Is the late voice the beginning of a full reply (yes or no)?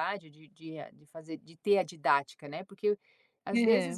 no